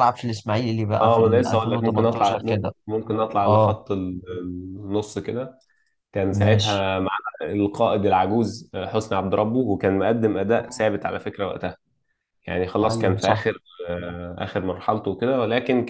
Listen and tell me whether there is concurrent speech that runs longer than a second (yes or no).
yes